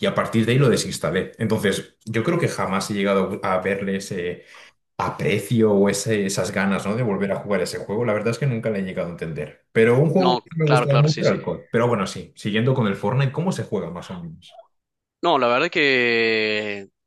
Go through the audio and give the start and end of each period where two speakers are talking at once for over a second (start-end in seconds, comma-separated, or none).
10.2-11.4